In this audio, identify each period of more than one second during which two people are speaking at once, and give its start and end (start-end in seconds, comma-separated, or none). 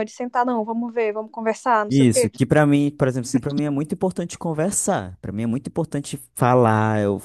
none